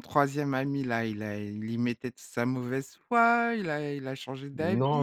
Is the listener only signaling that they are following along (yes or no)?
no